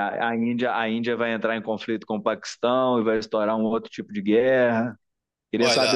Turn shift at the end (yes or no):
yes